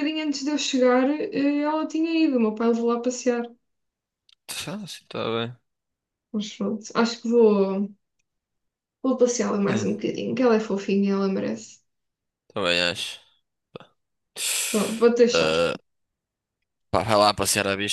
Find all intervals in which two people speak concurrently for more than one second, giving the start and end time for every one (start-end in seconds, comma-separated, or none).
none